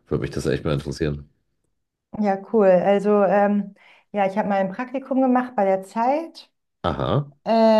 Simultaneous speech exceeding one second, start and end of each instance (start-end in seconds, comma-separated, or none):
none